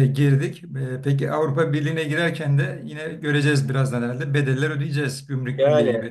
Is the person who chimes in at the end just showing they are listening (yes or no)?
no